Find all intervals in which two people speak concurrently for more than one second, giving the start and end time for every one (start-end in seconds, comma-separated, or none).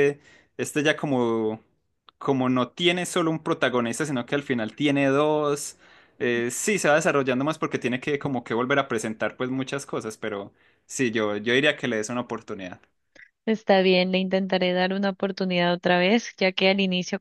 none